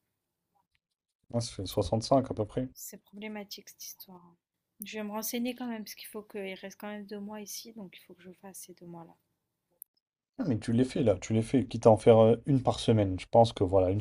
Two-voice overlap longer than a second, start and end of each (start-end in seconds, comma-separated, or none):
none